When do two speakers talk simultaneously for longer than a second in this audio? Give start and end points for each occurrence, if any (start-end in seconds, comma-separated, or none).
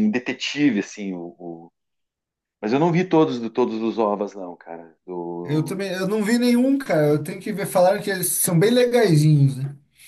none